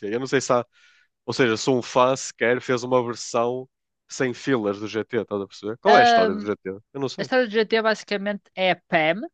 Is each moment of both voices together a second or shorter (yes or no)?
yes